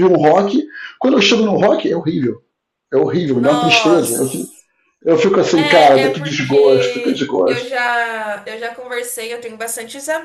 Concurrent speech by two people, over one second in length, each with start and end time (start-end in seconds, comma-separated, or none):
3.3-4.7, 5.5-7.7